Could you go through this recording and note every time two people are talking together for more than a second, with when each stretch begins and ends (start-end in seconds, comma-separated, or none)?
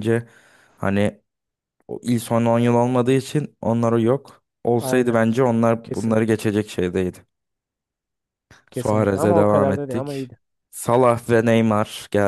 8.7-10.3